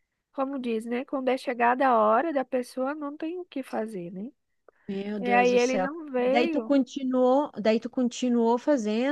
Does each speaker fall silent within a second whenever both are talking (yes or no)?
no